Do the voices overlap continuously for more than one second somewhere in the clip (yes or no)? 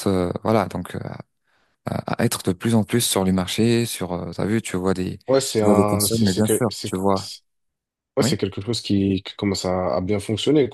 yes